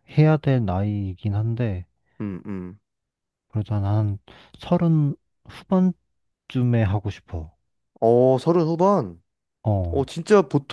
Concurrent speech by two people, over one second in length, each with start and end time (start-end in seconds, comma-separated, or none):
none